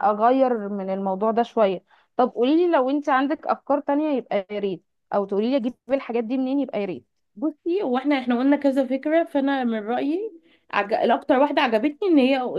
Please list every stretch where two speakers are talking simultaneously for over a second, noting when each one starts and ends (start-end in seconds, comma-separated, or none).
none